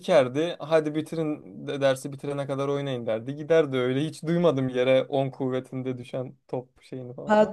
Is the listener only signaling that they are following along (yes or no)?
no